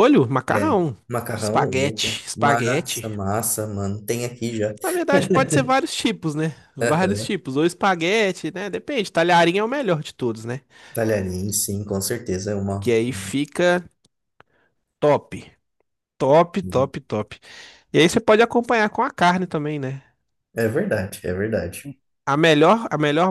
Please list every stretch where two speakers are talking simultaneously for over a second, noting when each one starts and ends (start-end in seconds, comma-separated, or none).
1.3-3.1